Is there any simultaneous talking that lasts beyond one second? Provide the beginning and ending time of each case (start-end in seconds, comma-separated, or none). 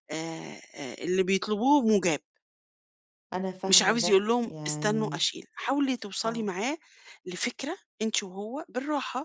3.7-5.2